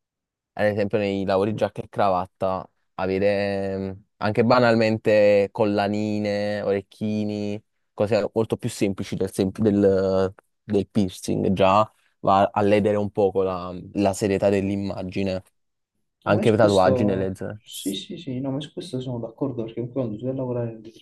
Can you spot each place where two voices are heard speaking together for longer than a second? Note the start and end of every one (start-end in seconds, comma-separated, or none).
16.2-17.6